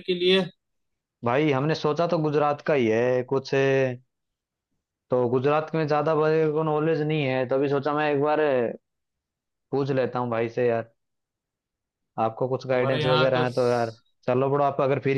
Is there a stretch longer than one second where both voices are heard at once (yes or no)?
yes